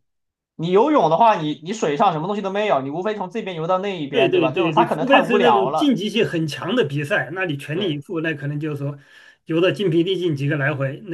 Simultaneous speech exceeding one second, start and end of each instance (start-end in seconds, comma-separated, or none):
4.1-6.0